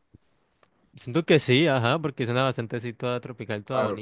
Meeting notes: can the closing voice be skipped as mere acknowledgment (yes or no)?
no